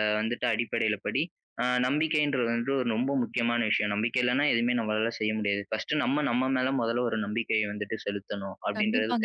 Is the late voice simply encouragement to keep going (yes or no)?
no